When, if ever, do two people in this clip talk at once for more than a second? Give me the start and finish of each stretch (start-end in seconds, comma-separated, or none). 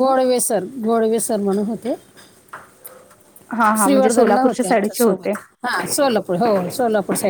3.8-5.3